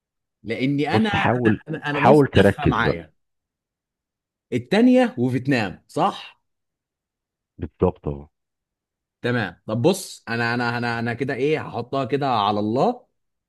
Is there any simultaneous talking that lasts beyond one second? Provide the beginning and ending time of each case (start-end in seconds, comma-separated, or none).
0.9-3.0